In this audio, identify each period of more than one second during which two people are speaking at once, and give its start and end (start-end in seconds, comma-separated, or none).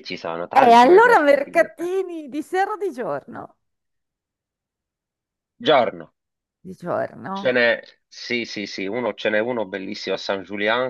0.5-1.9